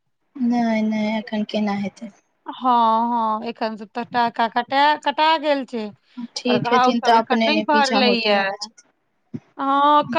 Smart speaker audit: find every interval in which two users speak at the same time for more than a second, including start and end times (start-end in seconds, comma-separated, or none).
6.5-8.4